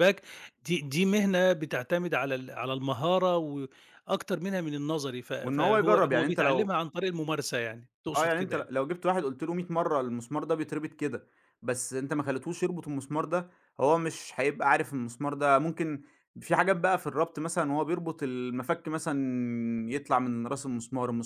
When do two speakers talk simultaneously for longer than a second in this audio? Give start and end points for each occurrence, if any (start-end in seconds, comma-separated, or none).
5.5-6.7